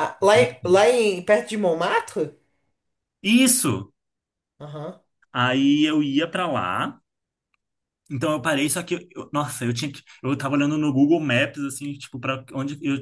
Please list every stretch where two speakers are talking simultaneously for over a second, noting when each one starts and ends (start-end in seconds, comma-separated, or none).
none